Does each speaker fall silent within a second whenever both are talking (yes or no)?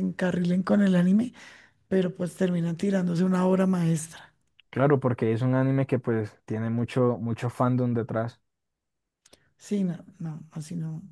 yes